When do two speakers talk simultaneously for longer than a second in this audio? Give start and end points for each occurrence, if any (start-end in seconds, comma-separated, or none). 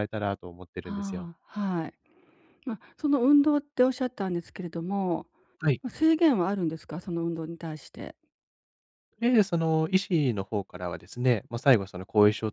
none